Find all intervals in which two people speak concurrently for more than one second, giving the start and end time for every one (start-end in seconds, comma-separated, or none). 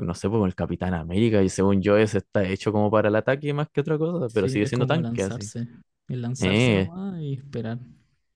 4.3-5.5